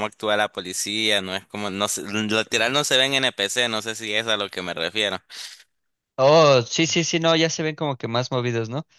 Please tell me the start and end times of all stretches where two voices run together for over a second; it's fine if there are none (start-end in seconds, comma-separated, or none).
none